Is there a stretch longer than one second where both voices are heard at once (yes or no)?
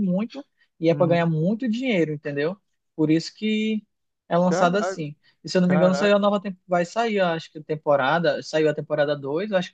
no